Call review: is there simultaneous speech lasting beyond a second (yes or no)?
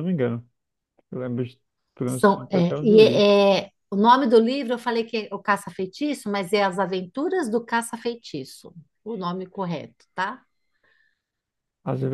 yes